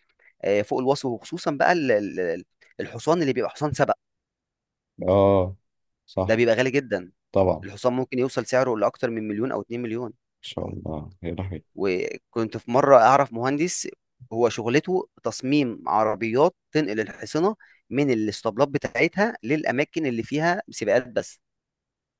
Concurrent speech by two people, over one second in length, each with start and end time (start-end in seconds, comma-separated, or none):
none